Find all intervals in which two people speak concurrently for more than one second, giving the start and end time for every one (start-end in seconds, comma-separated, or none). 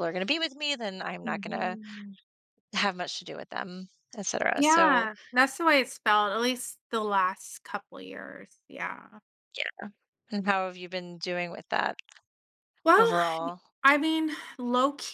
none